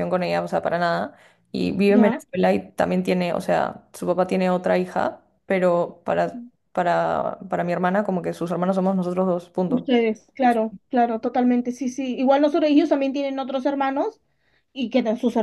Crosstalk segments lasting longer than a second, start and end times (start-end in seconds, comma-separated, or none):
none